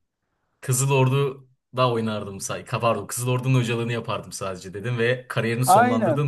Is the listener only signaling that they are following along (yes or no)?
no